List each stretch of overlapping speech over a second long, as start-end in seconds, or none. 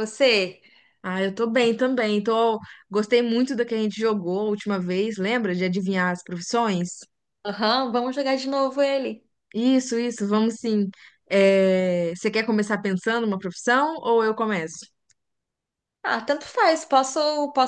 none